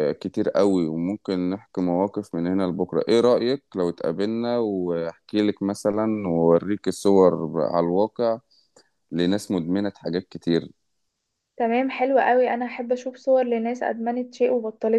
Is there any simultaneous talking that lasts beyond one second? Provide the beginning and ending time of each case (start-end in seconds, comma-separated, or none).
none